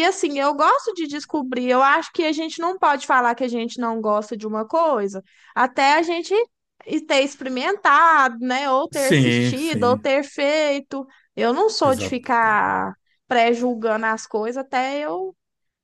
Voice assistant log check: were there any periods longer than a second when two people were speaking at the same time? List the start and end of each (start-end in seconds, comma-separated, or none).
8.9-10.1